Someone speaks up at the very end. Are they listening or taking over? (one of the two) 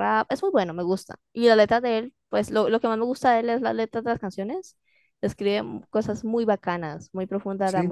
taking over